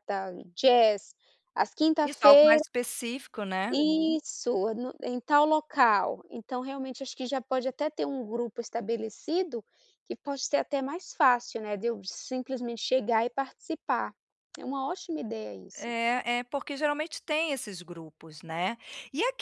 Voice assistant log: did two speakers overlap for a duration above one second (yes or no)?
no